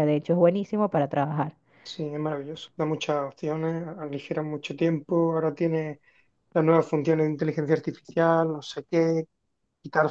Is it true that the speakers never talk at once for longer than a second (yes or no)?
yes